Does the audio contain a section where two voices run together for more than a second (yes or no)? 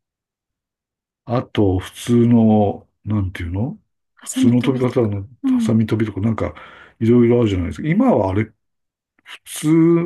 yes